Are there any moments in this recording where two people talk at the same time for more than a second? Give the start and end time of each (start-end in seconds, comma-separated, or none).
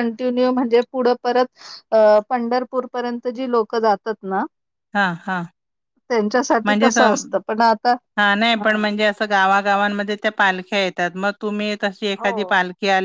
none